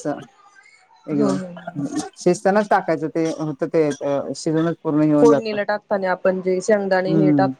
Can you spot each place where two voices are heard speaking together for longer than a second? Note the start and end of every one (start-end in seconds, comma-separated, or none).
none